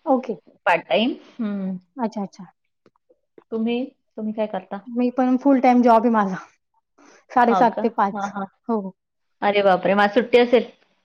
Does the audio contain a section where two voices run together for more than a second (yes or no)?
no